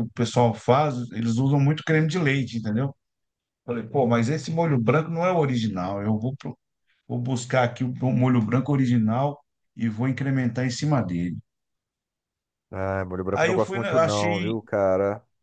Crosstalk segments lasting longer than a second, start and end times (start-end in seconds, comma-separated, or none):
13.3-14.6